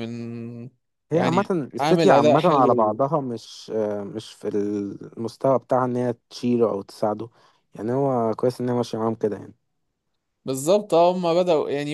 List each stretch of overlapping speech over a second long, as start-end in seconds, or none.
1.1-3.0